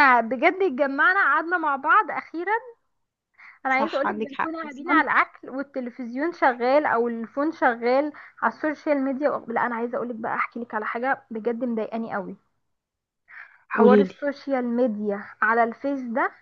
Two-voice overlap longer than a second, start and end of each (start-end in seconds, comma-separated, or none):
3.7-5.0